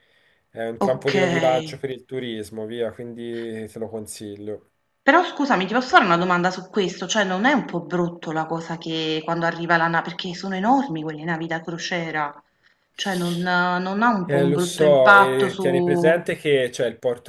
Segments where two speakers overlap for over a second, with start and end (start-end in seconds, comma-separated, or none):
14.2-16.2